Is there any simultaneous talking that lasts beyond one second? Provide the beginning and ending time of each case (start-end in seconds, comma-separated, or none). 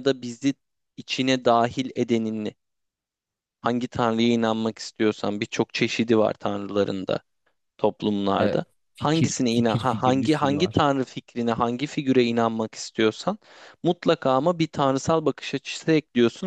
8.3-10.8